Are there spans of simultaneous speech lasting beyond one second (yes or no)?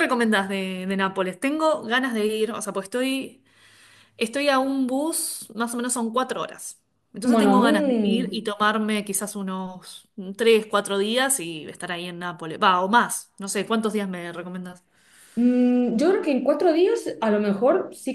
yes